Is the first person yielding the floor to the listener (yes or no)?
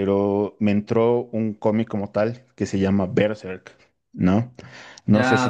yes